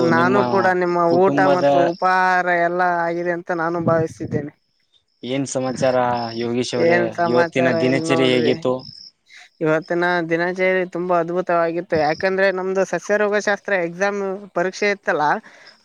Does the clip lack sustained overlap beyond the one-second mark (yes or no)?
no